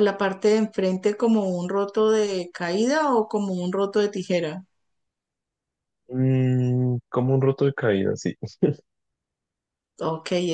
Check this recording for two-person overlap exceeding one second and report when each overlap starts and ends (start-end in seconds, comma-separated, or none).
none